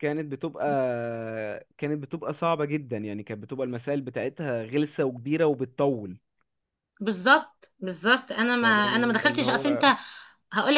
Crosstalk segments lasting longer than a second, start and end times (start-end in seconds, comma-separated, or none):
8.6-9.8